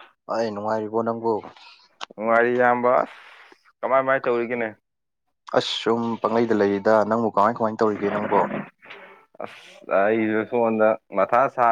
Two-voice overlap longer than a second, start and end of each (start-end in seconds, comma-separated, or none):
none